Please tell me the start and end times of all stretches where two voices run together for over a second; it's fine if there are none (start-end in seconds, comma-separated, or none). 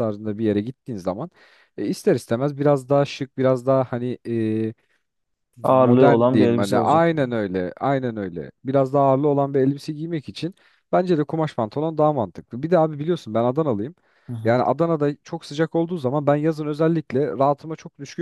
5.6-7.0